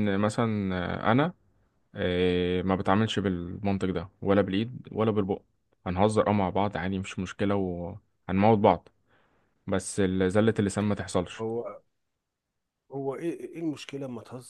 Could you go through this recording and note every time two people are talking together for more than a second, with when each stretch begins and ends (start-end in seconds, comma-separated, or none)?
none